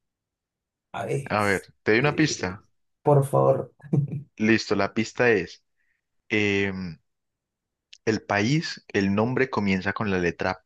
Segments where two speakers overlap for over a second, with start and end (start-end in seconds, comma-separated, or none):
1.2-2.6